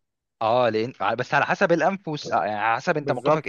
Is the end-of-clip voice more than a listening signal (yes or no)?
yes